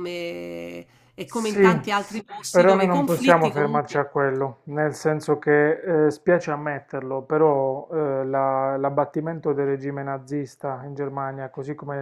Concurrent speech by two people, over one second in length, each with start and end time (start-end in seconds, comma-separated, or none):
2.5-4.0